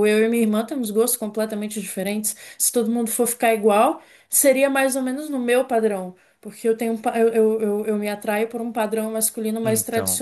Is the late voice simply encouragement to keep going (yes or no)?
yes